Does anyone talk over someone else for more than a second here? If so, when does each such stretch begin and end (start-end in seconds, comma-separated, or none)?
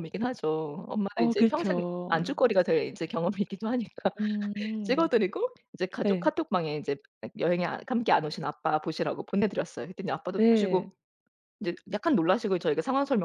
1.1-2.4